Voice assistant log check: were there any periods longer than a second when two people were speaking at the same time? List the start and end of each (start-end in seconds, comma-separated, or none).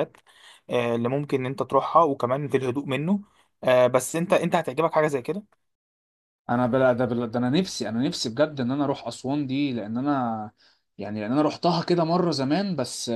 none